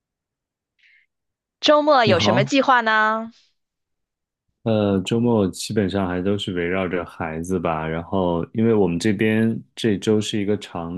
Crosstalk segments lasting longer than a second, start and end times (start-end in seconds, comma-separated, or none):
none